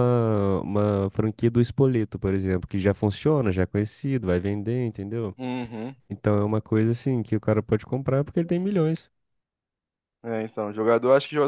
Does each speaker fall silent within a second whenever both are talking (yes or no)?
yes